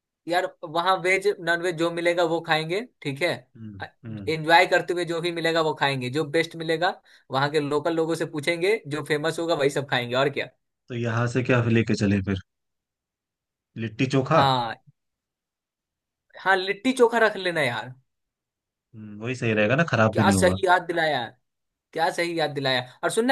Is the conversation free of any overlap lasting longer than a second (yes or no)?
yes